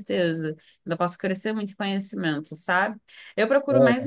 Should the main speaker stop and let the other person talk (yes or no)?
no